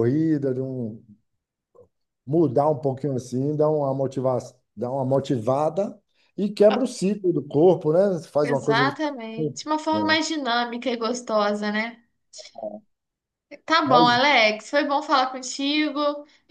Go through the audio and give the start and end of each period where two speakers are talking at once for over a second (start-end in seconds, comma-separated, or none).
8.4-10.2